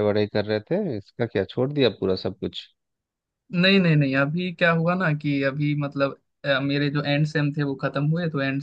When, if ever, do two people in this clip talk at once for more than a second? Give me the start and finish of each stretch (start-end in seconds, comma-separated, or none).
none